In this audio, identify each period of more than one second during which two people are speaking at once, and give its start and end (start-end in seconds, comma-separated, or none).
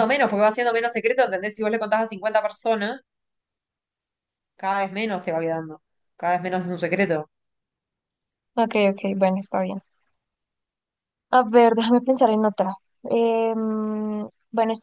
none